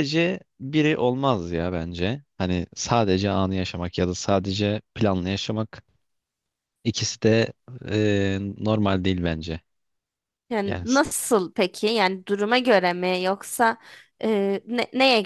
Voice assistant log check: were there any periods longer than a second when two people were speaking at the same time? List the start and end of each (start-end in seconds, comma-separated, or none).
none